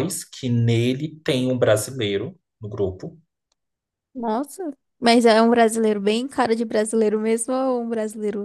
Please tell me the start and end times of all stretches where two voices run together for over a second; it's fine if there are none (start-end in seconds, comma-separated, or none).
none